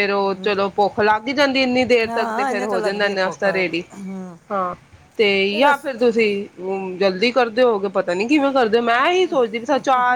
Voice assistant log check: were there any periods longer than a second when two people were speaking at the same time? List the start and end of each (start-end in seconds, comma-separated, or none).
2.1-3.8